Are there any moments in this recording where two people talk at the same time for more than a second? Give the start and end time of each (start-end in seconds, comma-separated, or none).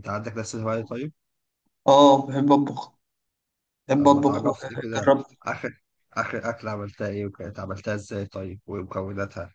4.0-5.2